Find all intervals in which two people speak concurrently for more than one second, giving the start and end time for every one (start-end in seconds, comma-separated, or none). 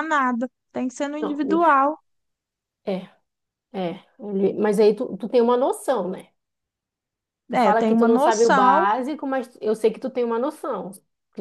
7.5-8.9